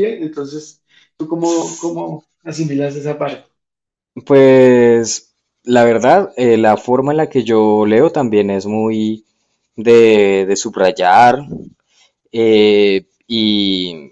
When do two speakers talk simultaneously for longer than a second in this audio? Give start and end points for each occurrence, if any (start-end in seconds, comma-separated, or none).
none